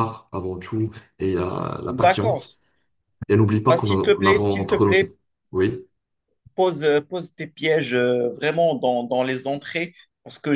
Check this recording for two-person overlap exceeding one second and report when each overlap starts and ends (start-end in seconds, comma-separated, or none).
3.6-4.9